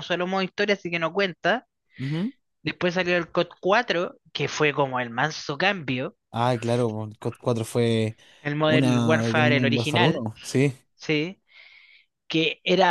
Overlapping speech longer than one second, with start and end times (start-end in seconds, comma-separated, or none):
8.6-10.2